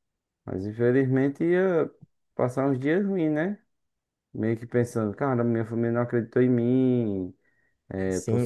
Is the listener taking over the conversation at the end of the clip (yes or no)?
no